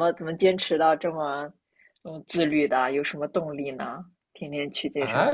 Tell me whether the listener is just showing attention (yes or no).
no